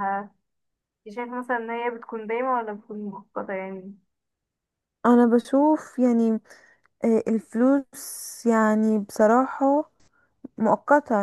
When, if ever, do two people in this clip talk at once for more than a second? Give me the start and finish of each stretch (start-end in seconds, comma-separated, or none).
none